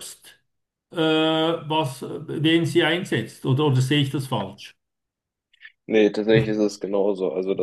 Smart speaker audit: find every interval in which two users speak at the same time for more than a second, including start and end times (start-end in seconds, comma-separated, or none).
none